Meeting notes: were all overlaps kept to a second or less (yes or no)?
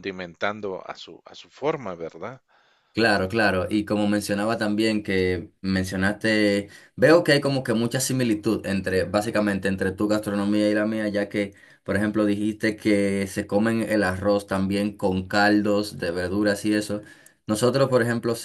yes